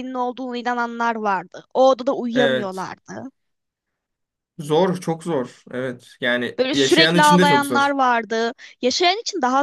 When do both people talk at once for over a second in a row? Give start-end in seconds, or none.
6.6-7.9